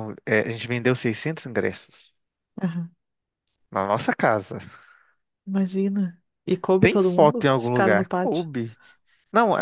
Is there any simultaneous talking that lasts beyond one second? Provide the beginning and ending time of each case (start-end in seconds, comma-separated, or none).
6.8-8.4